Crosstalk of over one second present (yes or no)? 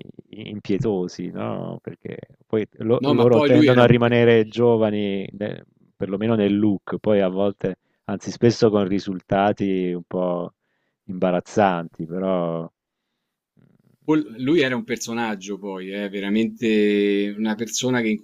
yes